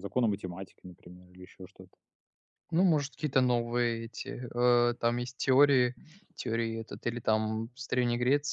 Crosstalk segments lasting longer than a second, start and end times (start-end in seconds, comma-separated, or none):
none